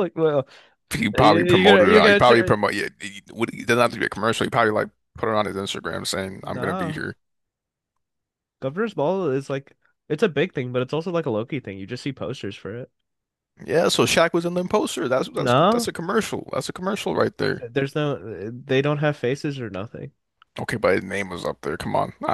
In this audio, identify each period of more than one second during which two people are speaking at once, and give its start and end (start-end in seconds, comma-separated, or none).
1.1-2.5